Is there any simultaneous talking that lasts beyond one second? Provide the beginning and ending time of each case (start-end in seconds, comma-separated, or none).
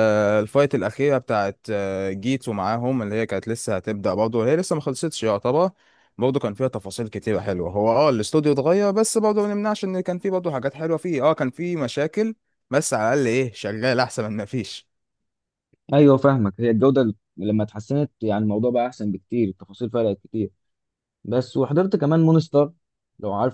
none